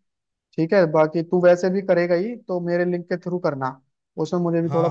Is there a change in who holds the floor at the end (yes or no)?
yes